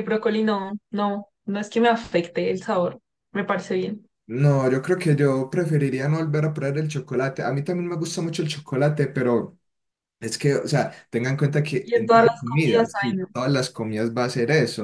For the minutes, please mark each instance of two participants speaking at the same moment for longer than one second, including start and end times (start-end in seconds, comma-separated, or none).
11.8-13.3